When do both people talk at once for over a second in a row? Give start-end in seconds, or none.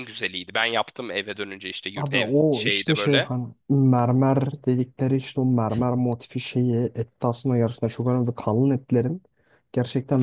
1.9-3.3